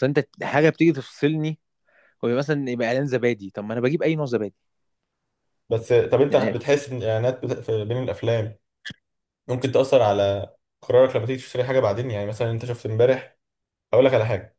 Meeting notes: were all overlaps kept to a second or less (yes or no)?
yes